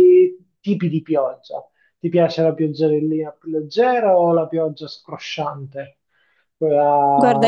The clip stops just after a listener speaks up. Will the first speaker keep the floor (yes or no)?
no